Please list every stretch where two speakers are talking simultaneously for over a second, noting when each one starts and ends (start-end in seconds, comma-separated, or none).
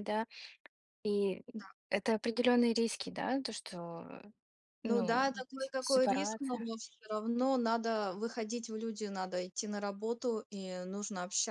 4.8-6.7